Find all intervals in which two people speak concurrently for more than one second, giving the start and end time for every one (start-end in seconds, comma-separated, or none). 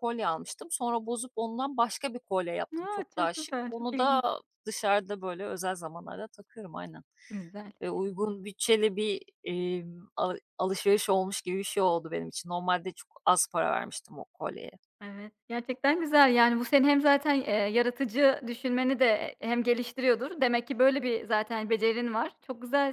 2.8-4.2